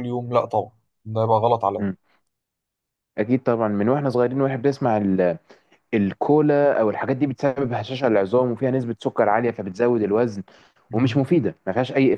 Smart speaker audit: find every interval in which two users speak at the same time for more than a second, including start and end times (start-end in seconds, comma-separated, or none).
none